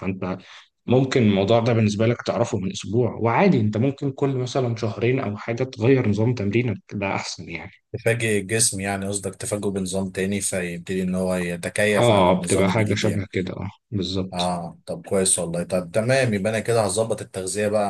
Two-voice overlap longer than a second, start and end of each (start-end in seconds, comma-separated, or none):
12.0-13.3